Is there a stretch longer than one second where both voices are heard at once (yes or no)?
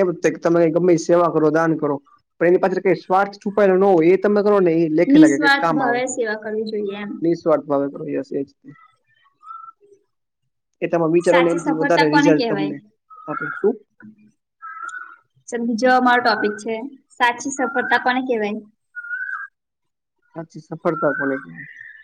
yes